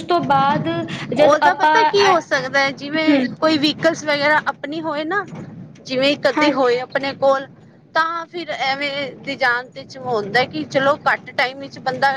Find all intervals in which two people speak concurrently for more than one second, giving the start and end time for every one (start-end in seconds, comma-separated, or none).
none